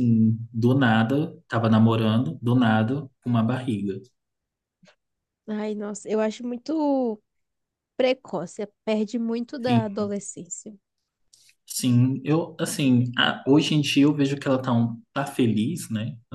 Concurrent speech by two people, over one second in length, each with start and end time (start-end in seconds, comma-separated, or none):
none